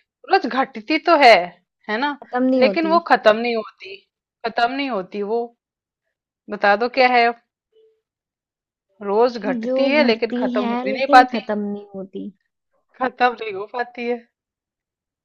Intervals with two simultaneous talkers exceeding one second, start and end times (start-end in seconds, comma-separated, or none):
9.6-11.4